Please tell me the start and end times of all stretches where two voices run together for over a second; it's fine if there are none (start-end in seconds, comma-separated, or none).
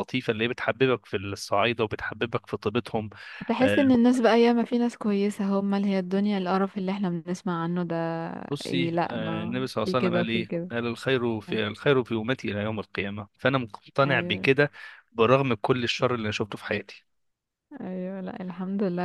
8.7-10.7